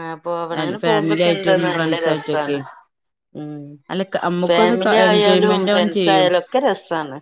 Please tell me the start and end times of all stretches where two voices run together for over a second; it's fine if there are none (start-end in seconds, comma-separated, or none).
0.8-2.6, 4.5-6.3